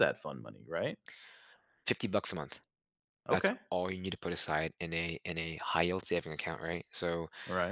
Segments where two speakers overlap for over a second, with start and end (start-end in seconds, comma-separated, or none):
none